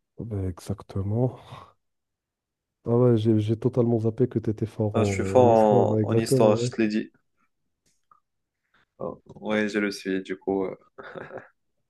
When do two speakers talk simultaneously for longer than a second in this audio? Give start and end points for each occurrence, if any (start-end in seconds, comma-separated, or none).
4.9-6.7